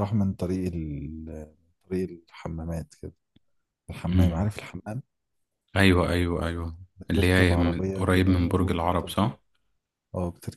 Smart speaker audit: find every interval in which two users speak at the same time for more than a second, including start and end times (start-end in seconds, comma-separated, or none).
7.2-9.1